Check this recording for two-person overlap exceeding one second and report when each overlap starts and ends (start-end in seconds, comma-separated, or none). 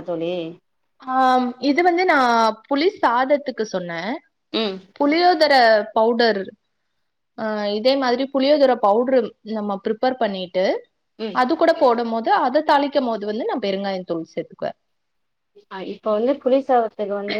none